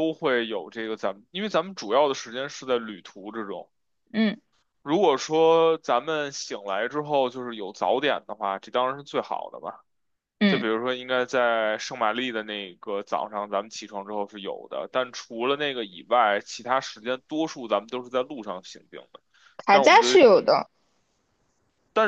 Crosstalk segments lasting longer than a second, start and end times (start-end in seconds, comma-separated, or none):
none